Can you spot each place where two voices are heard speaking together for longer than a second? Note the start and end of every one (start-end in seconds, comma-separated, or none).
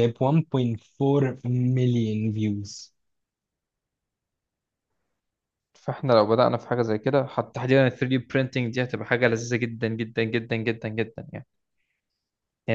none